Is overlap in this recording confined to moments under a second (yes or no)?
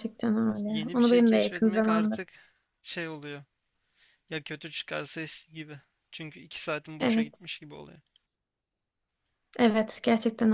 no